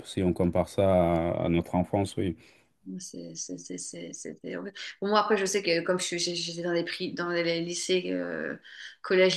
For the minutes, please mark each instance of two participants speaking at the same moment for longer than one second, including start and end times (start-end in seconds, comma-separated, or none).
none